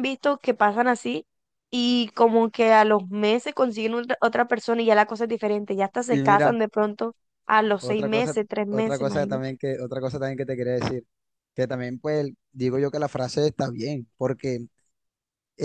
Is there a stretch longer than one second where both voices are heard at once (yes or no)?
yes